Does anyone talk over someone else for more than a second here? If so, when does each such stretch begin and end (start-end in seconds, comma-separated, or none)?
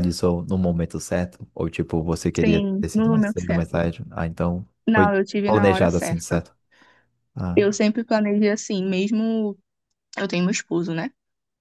2.4-3.9, 4.9-6.4